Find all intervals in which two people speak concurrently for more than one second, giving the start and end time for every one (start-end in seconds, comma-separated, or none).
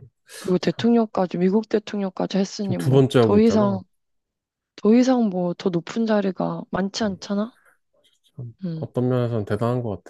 2.6-3.8